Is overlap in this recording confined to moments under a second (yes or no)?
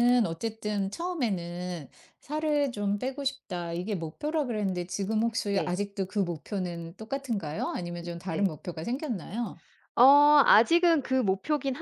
yes